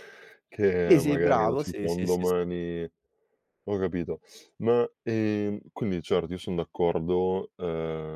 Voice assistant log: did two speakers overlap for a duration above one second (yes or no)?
yes